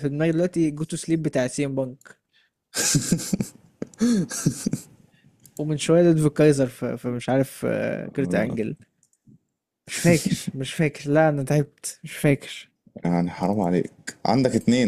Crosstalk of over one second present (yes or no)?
no